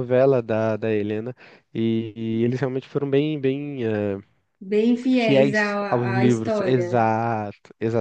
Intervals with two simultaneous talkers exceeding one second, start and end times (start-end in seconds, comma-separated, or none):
5.1-7.1